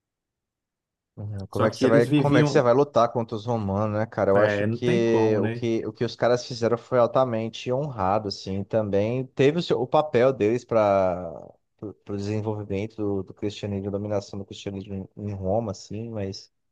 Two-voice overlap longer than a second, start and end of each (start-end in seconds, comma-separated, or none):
1.5-2.7, 4.3-5.6